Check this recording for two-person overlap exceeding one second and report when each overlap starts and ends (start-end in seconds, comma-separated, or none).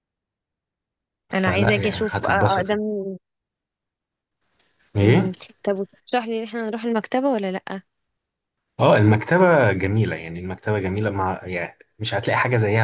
1.3-2.8